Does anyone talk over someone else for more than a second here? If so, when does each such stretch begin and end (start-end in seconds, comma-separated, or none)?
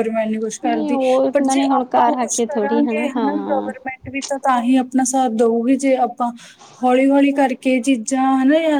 0.7-3.7